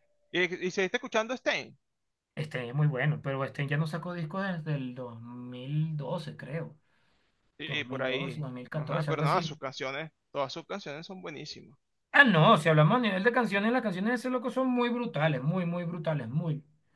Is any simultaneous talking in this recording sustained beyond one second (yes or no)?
yes